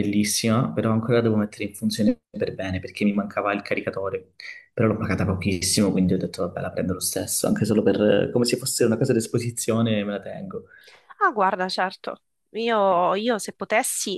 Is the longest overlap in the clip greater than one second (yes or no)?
no